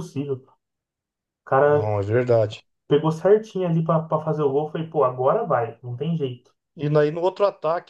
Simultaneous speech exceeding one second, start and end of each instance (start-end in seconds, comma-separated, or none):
none